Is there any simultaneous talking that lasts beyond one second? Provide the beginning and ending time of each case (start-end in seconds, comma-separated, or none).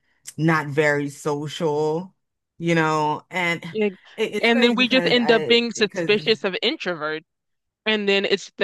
4.4-6.2